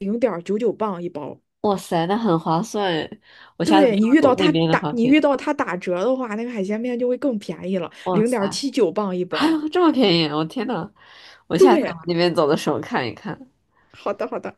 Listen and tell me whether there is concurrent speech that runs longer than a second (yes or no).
yes